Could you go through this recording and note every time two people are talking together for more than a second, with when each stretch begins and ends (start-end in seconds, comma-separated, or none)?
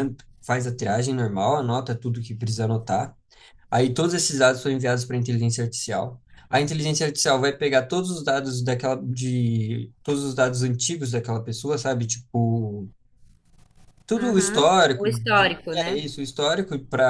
14.2-16.0